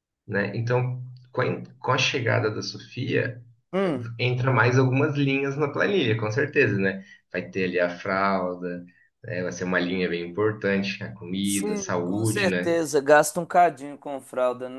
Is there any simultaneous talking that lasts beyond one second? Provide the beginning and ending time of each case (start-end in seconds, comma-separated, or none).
11.4-12.8